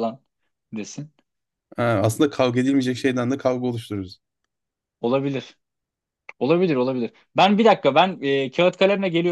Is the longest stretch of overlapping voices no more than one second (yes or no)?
yes